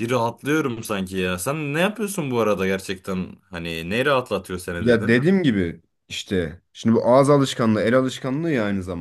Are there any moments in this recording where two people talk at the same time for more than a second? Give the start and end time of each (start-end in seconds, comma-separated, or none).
none